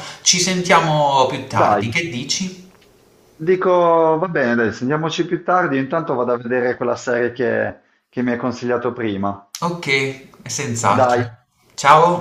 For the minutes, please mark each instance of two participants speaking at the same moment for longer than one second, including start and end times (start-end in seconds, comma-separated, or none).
none